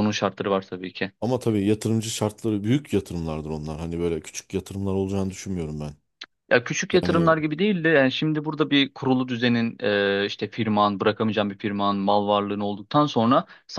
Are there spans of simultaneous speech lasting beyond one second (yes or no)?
no